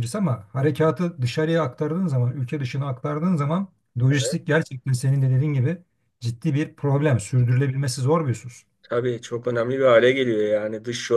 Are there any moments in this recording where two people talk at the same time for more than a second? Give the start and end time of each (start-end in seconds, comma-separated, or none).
none